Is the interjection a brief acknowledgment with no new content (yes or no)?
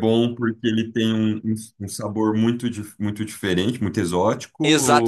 no